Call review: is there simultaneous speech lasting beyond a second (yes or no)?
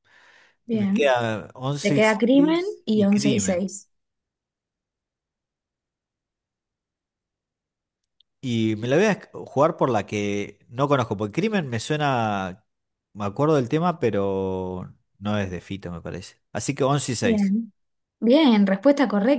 yes